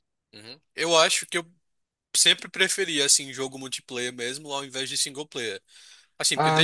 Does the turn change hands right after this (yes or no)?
no